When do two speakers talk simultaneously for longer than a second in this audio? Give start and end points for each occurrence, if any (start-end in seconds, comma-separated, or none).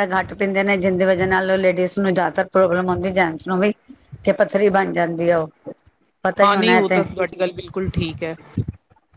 none